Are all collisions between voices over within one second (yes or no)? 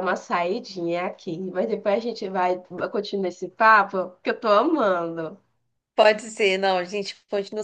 yes